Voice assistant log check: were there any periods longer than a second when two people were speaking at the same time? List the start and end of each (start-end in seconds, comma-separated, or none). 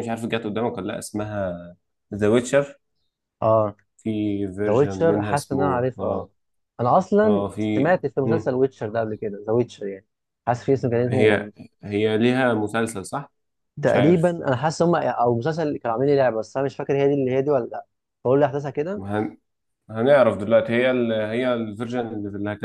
4.7-6.3